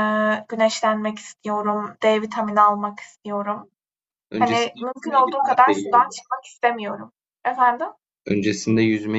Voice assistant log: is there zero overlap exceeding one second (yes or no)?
no